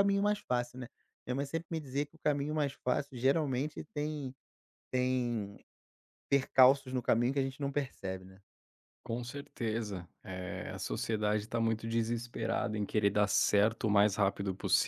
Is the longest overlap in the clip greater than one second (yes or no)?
no